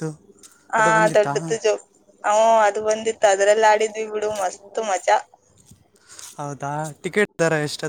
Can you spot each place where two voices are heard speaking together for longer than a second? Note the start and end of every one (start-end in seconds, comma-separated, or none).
none